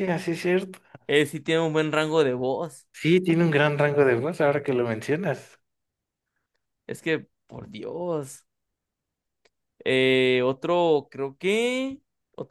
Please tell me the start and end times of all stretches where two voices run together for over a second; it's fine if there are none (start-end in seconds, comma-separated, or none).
none